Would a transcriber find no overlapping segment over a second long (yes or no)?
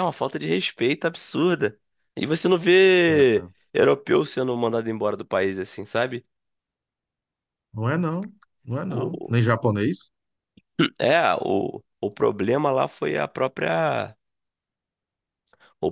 yes